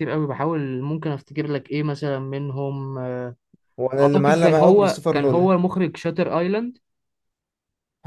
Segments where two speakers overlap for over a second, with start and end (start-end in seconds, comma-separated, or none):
4.0-5.5